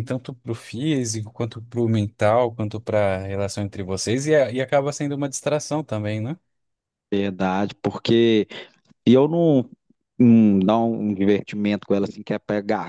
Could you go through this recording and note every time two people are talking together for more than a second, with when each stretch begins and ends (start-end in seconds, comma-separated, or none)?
none